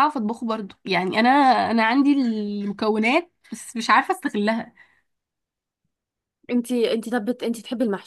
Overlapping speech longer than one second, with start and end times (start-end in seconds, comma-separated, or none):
none